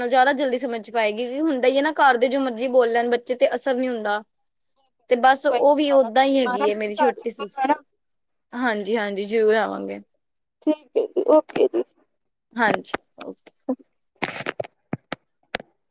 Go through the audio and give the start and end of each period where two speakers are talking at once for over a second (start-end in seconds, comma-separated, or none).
5.5-7.7